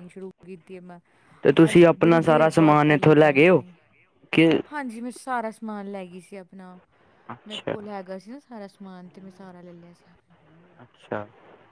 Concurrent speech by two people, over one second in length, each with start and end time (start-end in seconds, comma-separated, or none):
1.7-3.6